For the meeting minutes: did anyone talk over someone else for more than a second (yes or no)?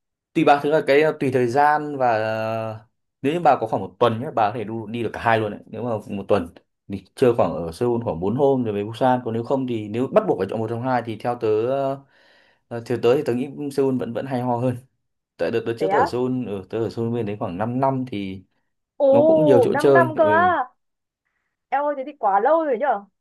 yes